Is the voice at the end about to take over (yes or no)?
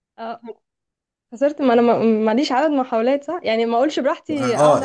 yes